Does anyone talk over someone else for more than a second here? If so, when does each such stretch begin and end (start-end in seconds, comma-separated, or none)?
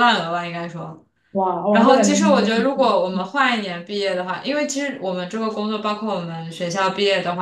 1.7-3.2